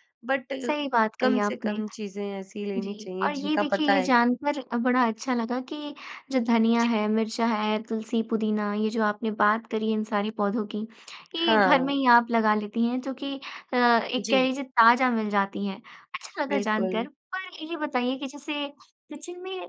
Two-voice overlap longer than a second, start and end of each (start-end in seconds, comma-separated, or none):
2.8-4.3